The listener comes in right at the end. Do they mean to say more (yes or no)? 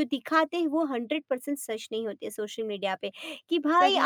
no